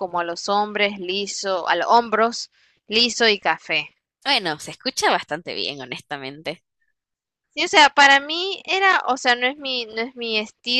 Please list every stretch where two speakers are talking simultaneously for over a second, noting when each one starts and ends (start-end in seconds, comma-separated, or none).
none